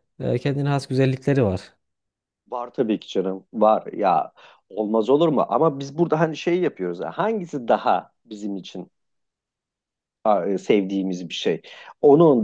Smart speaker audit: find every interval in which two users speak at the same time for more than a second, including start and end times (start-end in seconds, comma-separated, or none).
none